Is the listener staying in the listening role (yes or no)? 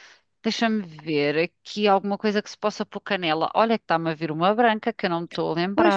no